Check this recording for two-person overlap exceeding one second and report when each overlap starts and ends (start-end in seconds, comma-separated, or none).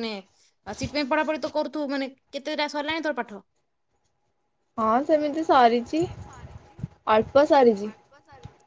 none